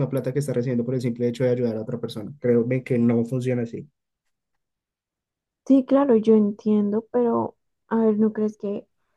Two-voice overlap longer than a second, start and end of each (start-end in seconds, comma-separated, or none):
none